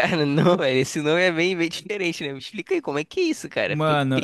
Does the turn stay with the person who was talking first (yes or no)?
no